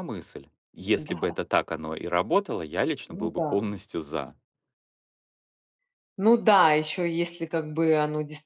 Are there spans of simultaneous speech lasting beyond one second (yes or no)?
no